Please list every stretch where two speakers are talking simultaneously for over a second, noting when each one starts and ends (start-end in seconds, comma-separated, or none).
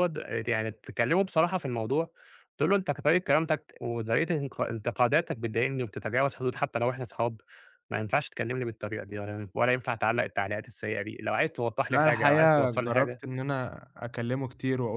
11.9-13.2